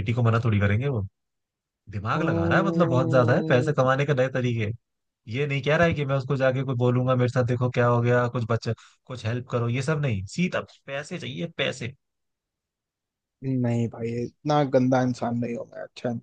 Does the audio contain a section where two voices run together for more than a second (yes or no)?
yes